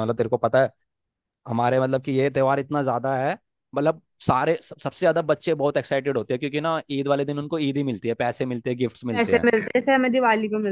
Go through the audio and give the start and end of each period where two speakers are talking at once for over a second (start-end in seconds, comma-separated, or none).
none